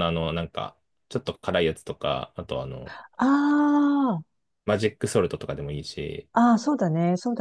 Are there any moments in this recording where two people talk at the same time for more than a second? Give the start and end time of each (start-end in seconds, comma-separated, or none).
none